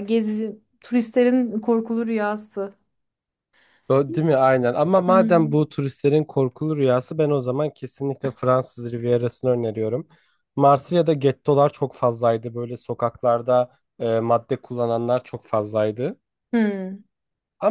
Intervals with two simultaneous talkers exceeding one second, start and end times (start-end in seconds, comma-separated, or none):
none